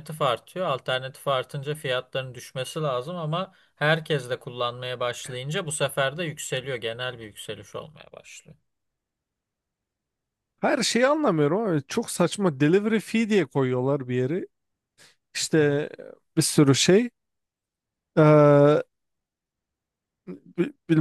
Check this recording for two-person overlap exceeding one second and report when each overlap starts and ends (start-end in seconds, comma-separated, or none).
none